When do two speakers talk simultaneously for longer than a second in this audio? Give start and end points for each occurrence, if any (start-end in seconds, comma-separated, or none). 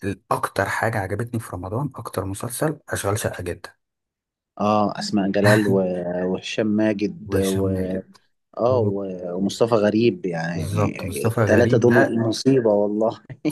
10.5-12.2